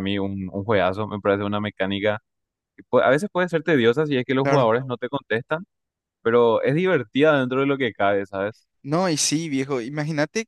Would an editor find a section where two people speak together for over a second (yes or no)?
no